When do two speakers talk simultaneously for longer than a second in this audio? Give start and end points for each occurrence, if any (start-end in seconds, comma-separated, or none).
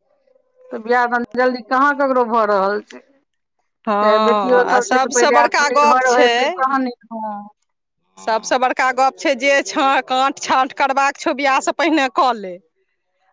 4.0-6.5